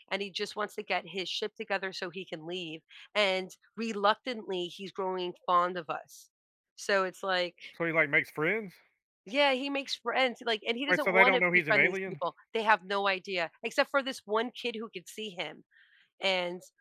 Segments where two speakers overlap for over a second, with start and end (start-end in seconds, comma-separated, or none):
10.9-12.2